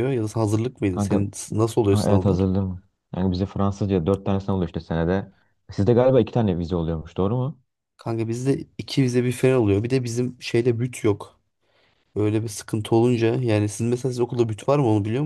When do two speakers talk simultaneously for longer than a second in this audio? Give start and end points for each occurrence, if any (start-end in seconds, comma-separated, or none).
none